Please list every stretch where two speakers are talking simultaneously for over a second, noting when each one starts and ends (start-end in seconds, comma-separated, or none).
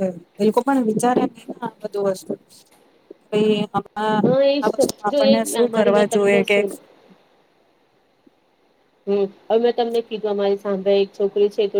4.2-6.6